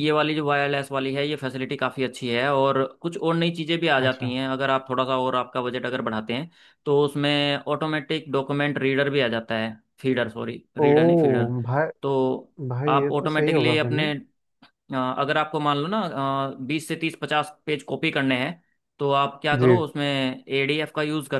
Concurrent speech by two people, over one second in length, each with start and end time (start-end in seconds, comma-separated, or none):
12.7-14.1